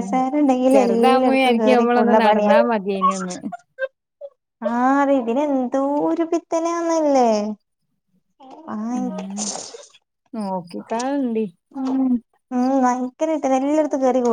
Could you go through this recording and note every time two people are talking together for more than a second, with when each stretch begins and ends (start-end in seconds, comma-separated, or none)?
0.7-2.5